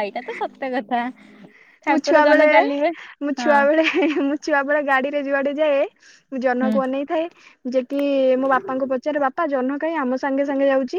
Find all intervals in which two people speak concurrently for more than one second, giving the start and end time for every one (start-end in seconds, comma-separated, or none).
none